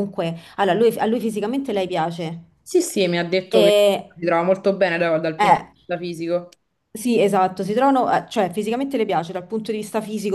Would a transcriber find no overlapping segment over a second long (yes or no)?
yes